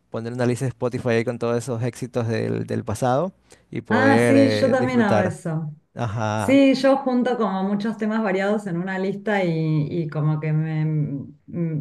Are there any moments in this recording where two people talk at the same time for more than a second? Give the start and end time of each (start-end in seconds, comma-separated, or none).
3.9-5.4